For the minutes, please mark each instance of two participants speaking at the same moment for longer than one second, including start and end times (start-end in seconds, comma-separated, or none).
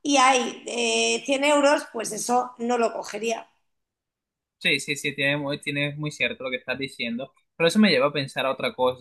none